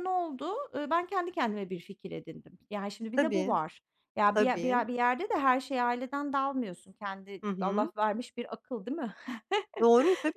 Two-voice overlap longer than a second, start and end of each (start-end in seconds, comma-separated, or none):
none